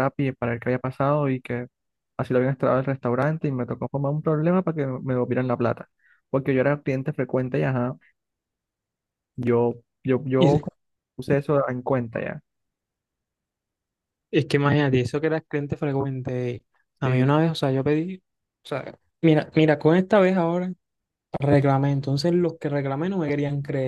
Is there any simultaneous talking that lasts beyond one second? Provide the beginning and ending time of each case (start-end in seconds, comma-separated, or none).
none